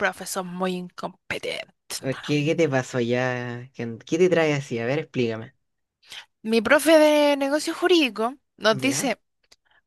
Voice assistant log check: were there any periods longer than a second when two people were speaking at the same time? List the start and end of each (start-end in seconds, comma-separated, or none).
none